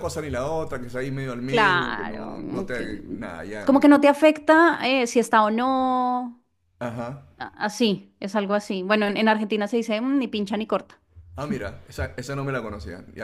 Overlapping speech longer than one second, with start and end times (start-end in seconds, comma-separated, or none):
1.4-2.9